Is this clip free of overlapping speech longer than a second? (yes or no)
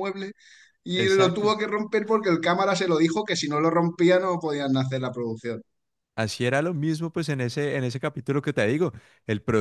yes